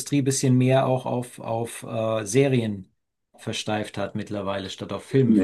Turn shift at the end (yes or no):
yes